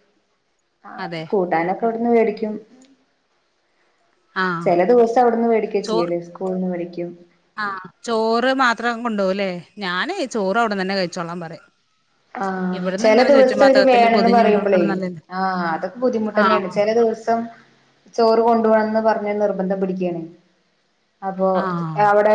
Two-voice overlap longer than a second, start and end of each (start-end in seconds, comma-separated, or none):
12.8-14.8